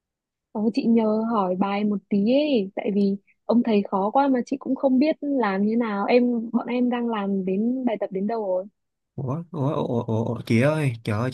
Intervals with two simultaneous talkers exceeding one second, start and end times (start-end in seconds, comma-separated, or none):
none